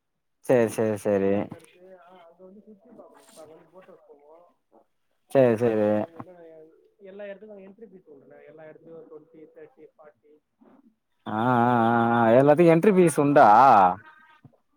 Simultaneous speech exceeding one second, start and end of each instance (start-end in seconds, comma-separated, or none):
11.4-13.4